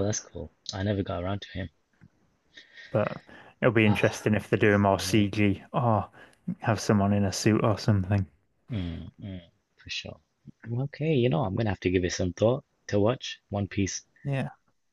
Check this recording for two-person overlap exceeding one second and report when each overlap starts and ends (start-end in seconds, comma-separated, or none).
none